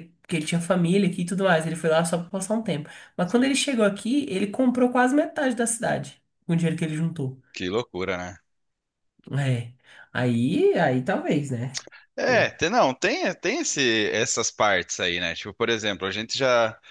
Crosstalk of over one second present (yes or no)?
no